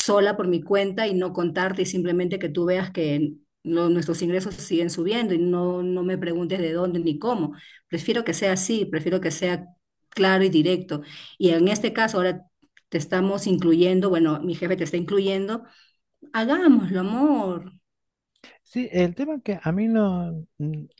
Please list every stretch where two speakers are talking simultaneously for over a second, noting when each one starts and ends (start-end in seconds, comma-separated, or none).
none